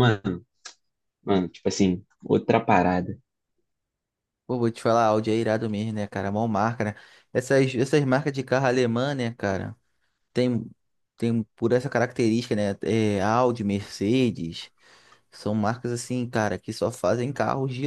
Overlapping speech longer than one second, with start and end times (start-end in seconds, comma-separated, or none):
none